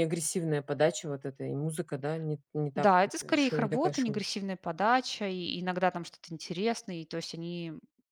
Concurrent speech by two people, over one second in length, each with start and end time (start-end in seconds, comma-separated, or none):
2.8-4.2